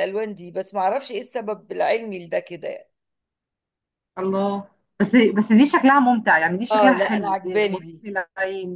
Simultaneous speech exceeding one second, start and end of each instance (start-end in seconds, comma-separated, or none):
6.7-8.0